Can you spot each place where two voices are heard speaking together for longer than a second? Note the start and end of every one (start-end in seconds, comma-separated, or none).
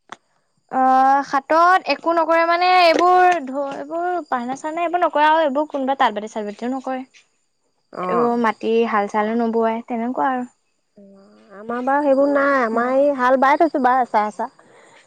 none